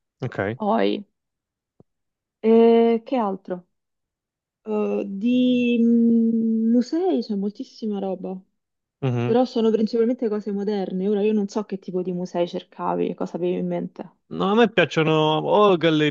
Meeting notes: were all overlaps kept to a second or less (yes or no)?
yes